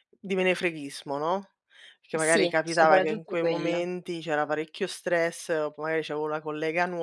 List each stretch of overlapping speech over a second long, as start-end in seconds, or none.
2.2-3.9